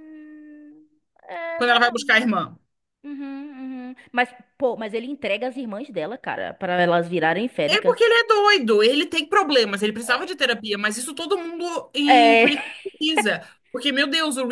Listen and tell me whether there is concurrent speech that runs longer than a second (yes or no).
no